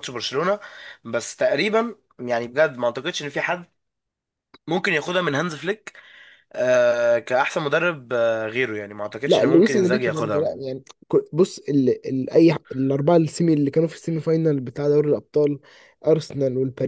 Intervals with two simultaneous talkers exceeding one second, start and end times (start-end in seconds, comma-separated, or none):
9.3-10.5